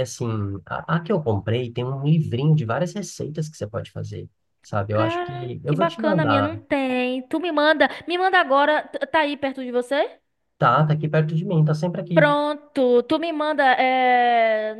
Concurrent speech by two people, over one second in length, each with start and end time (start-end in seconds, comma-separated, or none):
4.9-6.6